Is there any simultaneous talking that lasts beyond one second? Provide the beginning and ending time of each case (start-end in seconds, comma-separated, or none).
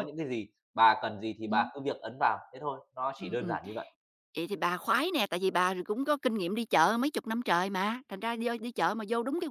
none